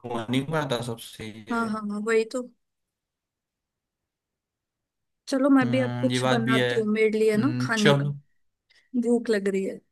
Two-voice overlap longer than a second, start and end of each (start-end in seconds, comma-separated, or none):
5.6-8.1